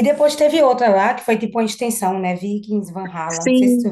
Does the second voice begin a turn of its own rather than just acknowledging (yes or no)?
yes